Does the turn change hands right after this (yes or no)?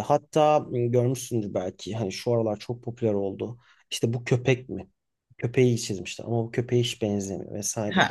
yes